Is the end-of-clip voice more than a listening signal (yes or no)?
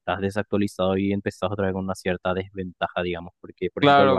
yes